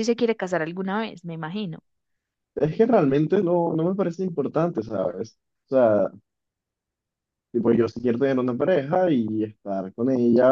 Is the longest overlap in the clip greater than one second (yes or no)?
no